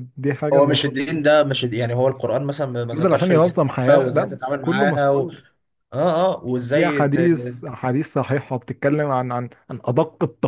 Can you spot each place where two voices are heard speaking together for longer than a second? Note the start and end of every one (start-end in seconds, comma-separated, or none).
2.9-5.3